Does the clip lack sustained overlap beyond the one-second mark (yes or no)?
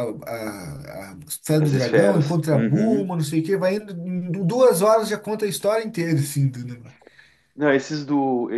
no